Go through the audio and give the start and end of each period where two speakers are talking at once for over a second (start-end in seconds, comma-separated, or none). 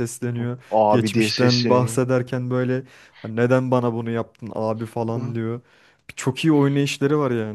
0.7-2.0